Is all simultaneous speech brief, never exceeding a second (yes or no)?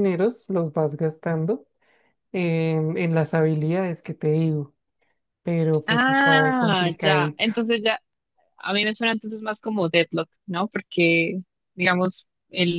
no